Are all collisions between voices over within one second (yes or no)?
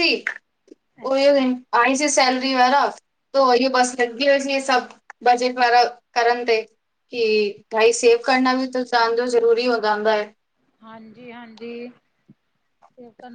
yes